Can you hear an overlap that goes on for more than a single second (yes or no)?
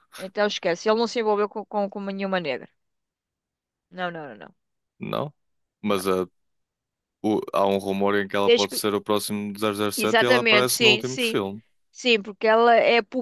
yes